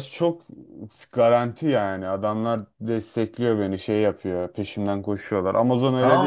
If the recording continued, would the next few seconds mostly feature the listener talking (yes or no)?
yes